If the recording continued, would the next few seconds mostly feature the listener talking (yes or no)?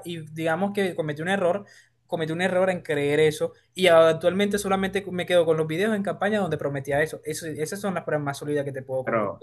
yes